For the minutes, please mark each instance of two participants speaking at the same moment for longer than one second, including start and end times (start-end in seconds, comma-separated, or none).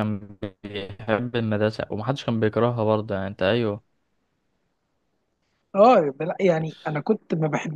none